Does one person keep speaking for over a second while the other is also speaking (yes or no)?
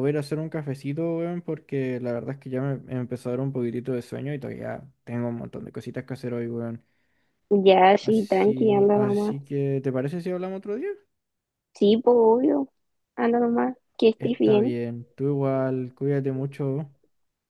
yes